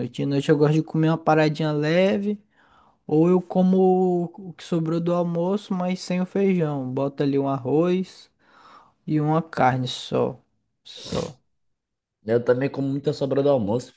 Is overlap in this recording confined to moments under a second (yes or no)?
yes